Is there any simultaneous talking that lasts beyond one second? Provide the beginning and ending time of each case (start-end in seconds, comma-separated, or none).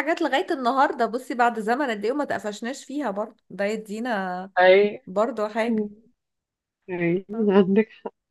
none